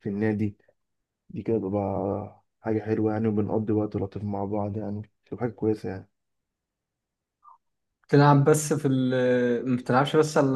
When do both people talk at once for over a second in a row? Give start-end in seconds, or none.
none